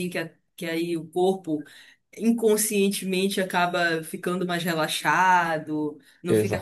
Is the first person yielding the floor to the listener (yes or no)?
no